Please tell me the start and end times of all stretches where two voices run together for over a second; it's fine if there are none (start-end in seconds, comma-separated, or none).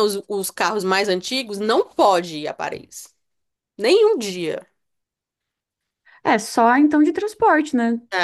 none